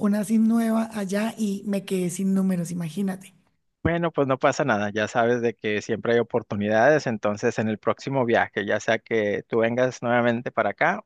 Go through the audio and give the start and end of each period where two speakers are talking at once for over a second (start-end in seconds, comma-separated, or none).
none